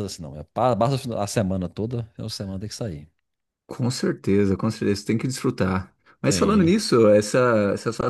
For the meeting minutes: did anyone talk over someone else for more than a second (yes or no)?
no